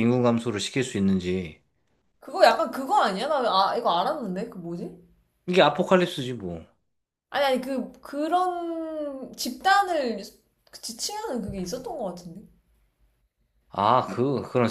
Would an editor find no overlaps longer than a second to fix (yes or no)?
yes